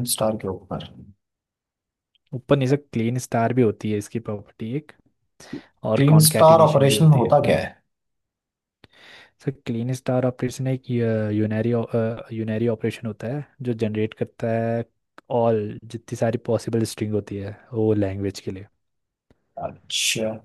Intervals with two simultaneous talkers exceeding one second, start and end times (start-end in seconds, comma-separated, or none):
6.0-7.4